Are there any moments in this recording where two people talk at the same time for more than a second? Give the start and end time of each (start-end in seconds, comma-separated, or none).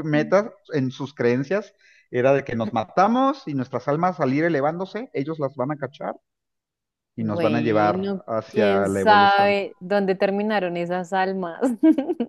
7.2-9.6